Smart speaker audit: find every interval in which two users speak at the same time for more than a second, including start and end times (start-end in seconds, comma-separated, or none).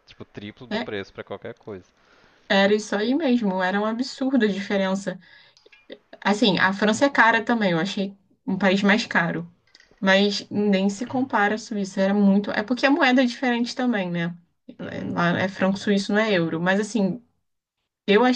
none